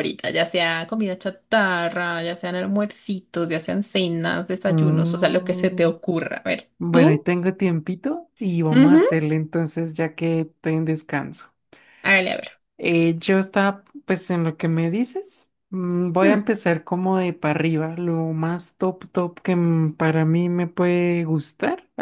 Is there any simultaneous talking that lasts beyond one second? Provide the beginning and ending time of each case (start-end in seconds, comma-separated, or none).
4.6-5.9